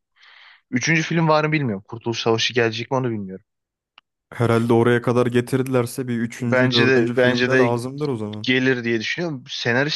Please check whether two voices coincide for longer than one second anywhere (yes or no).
yes